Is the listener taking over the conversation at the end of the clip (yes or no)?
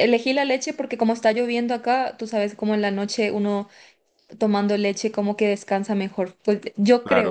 no